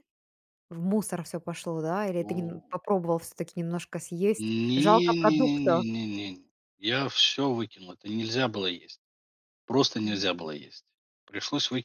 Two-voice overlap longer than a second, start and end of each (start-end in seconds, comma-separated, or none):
4.3-5.8